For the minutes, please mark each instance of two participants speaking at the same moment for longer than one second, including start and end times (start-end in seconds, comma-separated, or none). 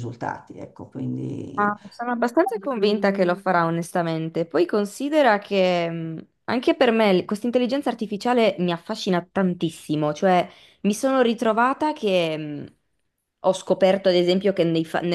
none